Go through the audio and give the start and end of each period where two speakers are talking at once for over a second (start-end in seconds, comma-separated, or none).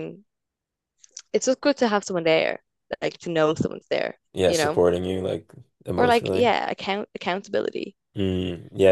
none